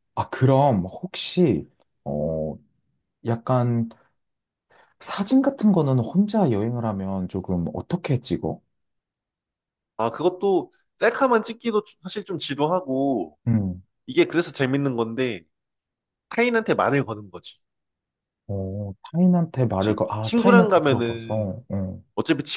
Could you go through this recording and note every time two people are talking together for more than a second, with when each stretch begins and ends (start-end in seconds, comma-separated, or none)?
19.7-21.6